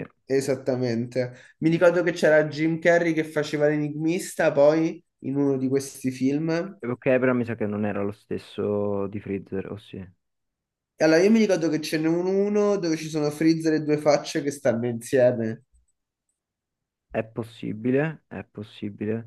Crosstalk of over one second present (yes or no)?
no